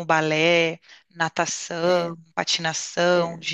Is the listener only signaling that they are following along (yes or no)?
yes